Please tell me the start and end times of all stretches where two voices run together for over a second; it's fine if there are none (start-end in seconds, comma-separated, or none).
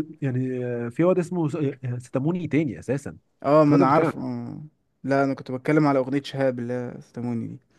none